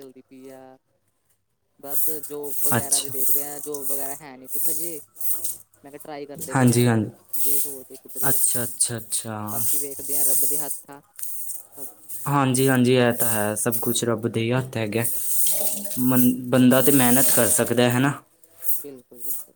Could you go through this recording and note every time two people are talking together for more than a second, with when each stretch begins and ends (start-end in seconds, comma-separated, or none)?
none